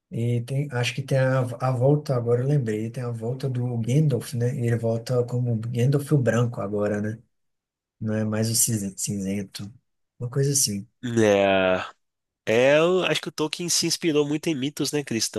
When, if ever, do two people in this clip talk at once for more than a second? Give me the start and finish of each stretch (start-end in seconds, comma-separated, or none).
none